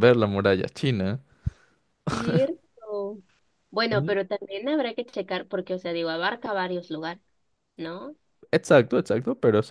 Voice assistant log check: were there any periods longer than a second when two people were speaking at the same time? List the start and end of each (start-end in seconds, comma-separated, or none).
none